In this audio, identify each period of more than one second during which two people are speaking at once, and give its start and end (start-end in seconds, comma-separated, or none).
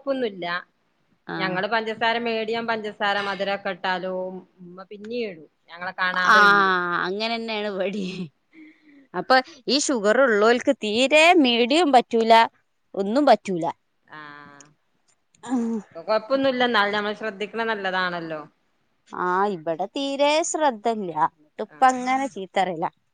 none